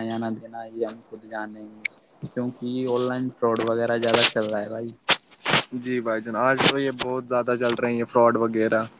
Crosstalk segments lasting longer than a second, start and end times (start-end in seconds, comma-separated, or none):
none